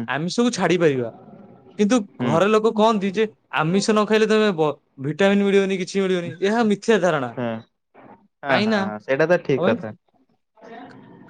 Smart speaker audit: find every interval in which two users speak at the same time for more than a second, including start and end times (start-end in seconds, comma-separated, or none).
none